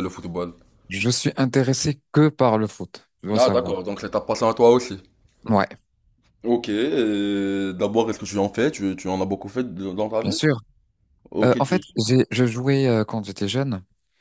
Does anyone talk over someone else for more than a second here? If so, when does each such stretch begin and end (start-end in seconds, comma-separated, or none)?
none